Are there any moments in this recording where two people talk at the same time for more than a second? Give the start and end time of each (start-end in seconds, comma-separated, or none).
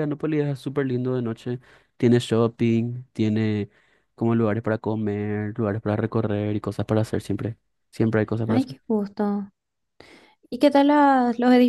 none